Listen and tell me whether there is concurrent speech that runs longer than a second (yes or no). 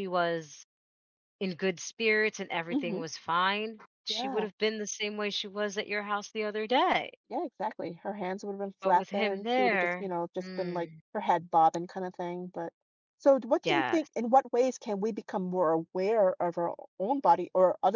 yes